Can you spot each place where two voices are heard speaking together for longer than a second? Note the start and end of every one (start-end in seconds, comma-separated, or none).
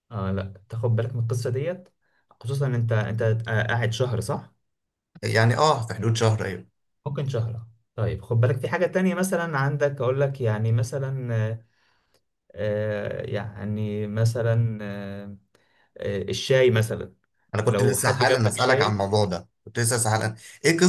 17.7-19.1